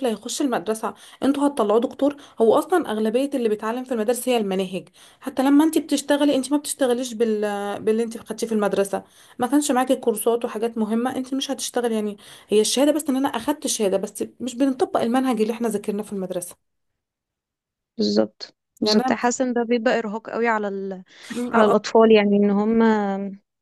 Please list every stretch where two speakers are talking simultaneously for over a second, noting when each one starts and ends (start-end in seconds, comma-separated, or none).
none